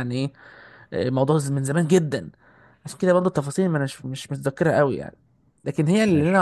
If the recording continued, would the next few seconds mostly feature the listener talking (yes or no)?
no